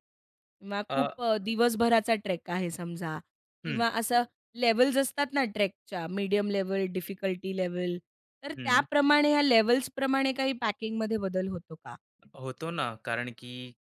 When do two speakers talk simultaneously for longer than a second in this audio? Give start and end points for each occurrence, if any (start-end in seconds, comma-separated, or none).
none